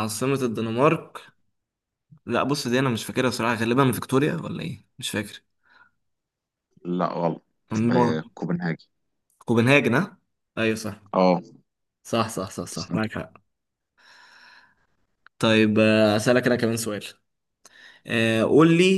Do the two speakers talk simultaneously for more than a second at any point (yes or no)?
no